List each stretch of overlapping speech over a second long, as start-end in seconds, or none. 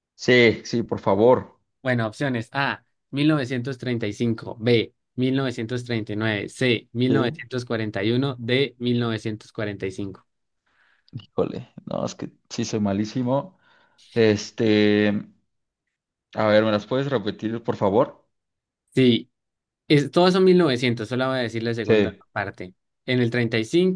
none